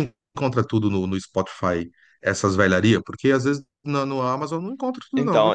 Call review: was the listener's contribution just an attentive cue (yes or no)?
no